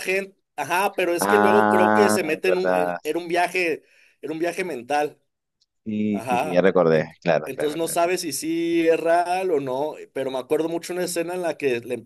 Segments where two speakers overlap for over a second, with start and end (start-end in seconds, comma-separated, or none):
1.2-3.0, 6.1-8.0